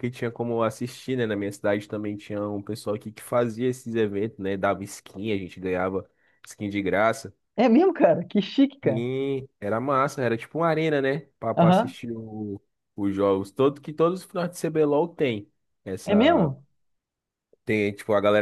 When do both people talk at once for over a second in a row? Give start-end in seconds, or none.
none